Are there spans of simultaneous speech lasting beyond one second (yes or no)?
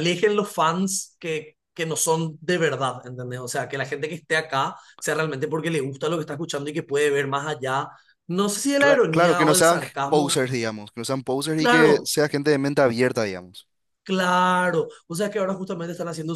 yes